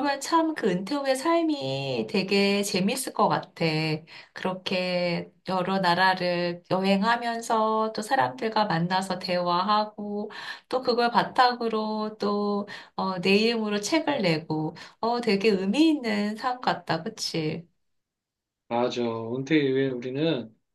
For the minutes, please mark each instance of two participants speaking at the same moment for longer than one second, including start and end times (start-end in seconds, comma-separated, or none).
none